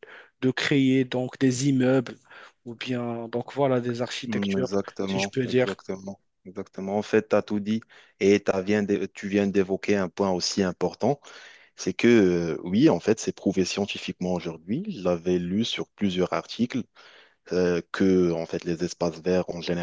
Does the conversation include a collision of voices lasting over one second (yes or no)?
yes